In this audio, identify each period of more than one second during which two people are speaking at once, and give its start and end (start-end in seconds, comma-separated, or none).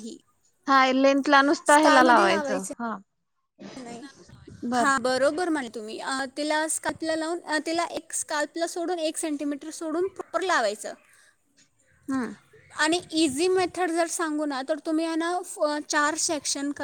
none